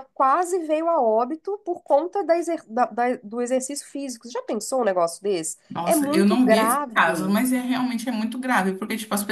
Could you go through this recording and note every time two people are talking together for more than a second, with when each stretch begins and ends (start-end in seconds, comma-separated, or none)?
5.7-7.4